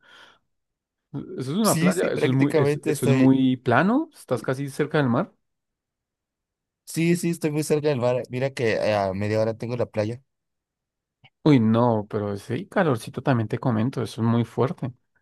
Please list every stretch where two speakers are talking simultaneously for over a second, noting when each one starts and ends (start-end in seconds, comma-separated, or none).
1.6-3.4